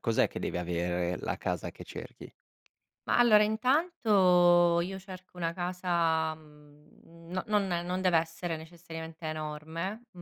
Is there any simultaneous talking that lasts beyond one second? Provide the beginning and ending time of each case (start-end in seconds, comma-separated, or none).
none